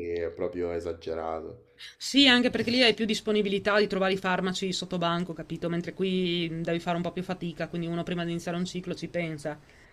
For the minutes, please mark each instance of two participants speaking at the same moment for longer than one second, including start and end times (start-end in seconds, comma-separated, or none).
none